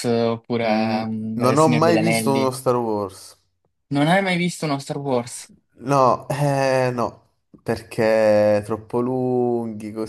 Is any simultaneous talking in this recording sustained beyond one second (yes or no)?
yes